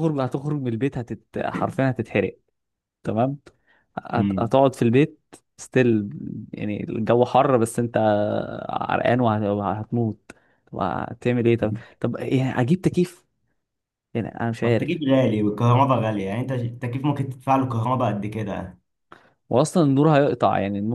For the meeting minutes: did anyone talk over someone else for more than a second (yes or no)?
no